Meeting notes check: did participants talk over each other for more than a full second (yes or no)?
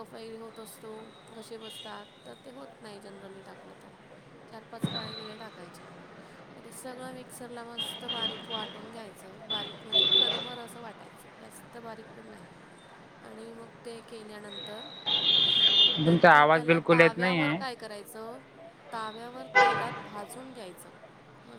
yes